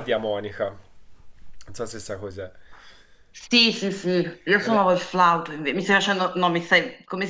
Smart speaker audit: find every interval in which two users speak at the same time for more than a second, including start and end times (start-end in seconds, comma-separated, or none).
none